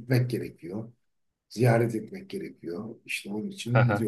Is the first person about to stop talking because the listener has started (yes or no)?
no